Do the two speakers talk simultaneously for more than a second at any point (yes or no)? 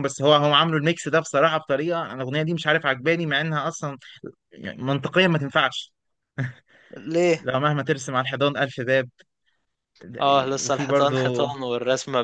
yes